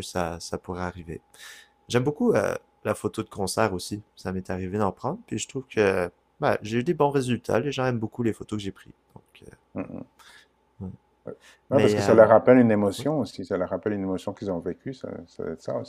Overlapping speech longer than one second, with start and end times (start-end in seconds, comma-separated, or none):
none